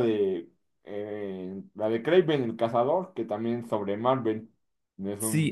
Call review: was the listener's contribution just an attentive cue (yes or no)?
no